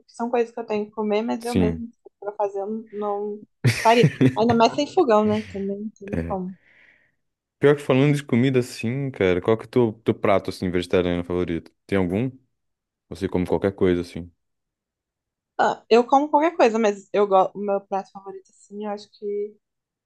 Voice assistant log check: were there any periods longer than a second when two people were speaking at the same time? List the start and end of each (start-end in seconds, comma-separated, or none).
none